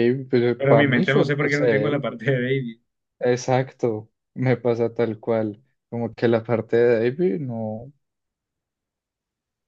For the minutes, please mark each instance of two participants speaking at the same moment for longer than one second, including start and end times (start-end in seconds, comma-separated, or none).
0.7-2.1